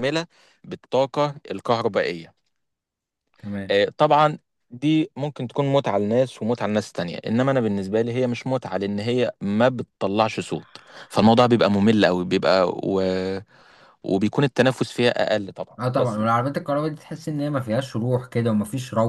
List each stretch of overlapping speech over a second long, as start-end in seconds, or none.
none